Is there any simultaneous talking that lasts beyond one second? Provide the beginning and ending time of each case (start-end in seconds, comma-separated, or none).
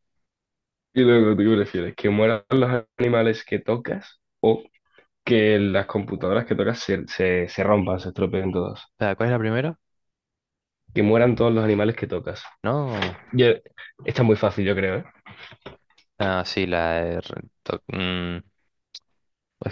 none